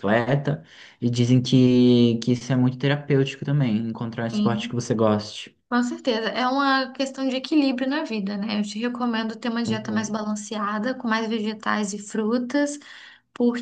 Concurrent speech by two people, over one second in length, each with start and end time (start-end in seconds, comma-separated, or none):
none